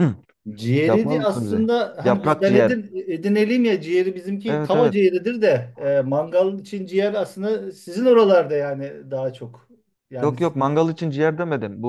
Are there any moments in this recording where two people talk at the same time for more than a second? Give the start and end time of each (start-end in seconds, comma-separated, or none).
0.9-2.8